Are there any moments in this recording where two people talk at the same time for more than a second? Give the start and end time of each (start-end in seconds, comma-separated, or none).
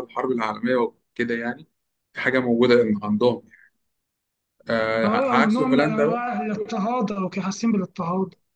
5.0-6.2